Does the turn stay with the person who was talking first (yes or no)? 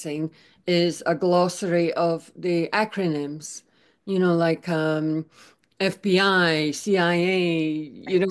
yes